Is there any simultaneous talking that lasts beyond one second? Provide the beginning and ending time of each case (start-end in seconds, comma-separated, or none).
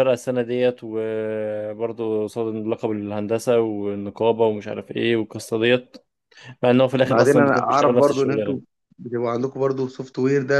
7.0-8.6